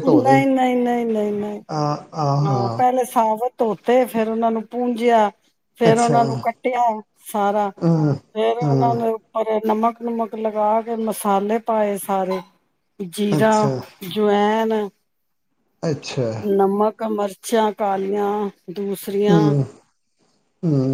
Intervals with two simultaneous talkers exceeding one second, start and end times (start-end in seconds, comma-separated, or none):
none